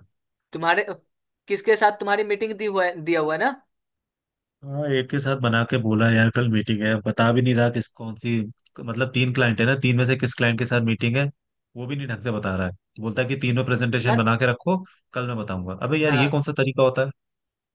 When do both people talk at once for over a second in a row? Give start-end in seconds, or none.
none